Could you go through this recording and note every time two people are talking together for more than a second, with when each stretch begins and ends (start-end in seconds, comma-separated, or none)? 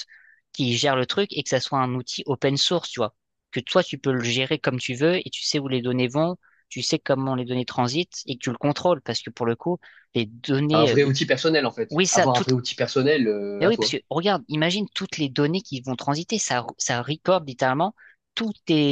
none